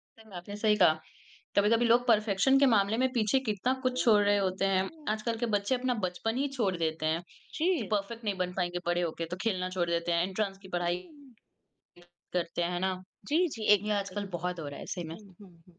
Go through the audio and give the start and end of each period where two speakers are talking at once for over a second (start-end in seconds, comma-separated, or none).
3.8-5.4